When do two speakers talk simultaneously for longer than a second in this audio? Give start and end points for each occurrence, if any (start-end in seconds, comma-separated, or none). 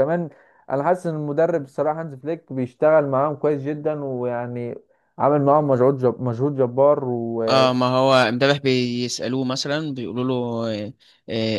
none